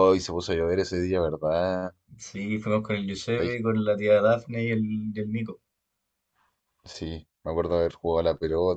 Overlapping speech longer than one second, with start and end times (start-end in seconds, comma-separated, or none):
none